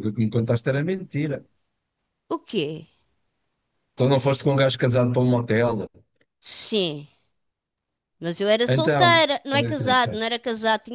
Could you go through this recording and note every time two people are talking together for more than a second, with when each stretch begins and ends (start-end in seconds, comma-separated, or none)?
8.7-10.2